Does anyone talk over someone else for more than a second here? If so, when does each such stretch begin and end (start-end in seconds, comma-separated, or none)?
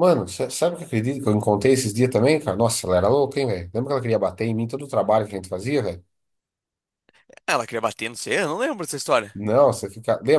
none